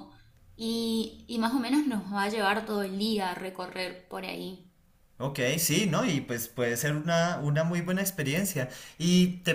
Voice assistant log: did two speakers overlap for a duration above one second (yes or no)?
no